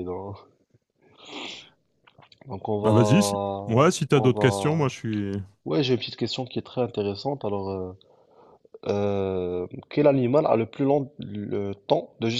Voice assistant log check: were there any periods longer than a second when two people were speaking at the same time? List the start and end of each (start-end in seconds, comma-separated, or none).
2.8-4.9